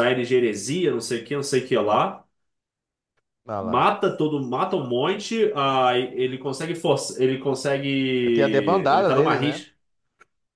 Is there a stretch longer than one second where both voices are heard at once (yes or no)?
yes